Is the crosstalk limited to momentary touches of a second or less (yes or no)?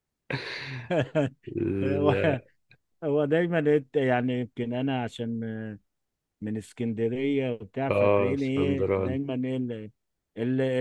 no